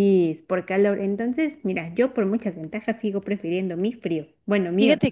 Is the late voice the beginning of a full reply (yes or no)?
yes